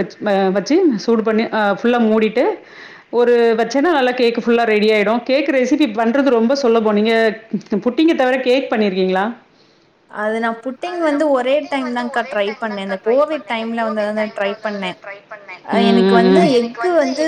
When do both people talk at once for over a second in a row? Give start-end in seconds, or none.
none